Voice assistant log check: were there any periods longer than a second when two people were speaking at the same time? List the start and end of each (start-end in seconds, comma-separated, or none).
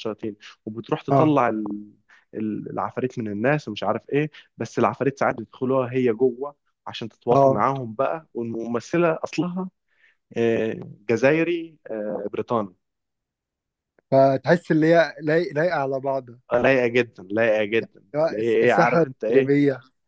18.1-19.6